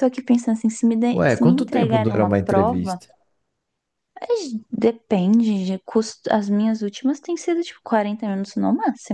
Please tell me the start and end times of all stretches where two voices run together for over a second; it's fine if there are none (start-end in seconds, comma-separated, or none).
1.1-3.0